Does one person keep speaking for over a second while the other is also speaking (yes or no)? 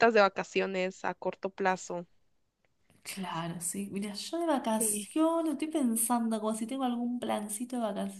no